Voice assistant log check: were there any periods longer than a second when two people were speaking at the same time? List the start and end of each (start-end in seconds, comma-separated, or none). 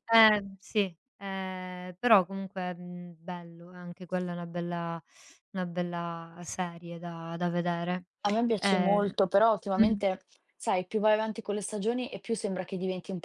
none